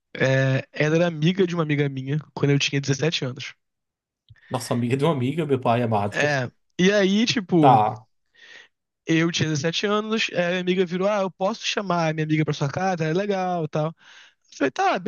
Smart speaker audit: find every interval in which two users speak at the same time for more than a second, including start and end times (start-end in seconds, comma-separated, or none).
none